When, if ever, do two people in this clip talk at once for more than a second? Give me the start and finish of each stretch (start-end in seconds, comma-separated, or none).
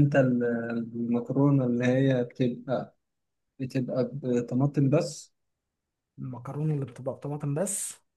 none